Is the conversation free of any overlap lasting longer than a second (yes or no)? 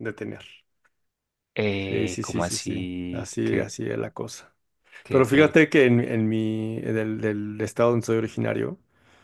no